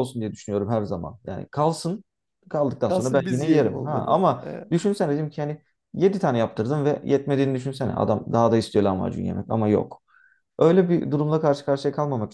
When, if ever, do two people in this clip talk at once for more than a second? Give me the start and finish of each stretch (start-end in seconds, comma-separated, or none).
2.8-4.7